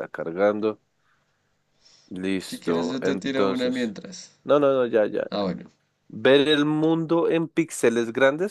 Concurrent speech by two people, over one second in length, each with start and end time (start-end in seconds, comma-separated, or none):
2.5-4.0